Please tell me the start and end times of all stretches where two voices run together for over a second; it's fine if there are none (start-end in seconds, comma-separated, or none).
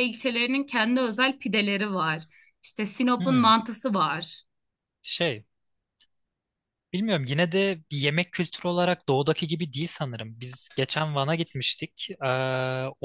none